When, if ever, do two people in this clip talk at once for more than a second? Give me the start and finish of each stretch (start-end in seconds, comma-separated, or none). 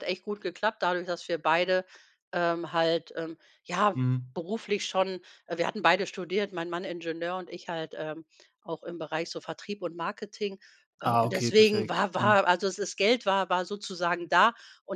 11.0-12.3